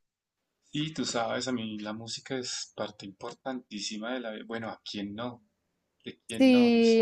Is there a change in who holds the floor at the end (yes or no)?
yes